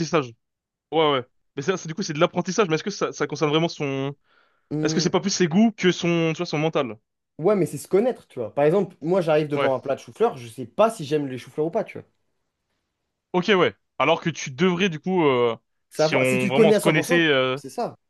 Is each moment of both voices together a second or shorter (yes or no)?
no